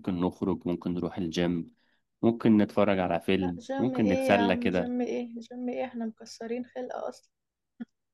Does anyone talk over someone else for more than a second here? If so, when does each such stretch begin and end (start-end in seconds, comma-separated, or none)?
3.4-4.9